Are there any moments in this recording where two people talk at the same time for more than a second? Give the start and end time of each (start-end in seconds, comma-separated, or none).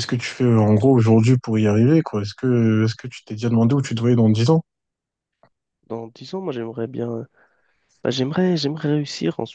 none